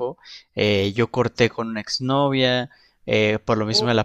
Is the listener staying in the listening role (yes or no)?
yes